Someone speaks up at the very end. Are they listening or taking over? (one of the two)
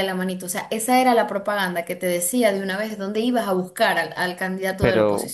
taking over